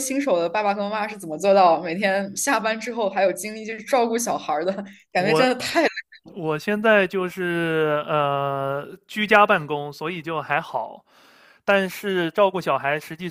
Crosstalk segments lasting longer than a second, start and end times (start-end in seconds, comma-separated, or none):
none